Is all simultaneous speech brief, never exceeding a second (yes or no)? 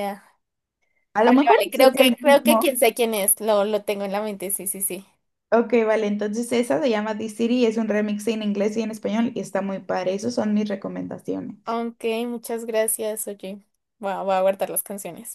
no